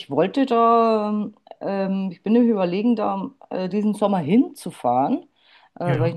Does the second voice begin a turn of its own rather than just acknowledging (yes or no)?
no